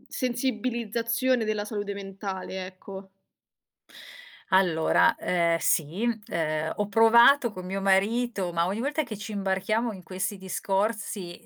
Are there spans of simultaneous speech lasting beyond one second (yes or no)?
no